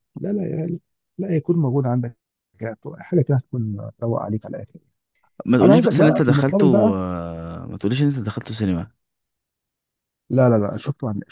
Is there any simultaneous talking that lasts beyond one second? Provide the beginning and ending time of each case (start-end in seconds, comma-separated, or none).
5.6-7.0